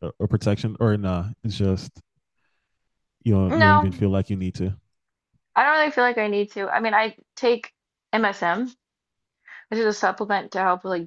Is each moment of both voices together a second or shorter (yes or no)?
yes